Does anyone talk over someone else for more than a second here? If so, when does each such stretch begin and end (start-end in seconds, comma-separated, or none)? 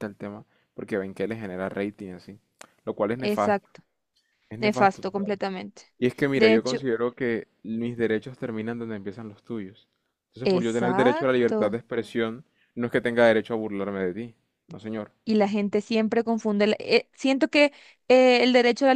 10.4-11.8